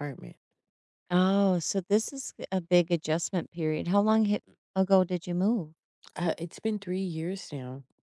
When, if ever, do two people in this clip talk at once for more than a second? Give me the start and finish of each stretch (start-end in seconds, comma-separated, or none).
none